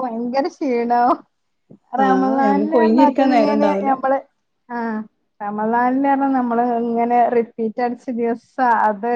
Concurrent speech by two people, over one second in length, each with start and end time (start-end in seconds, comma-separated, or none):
2.0-3.9